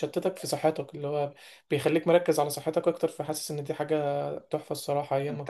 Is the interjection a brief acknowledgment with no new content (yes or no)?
no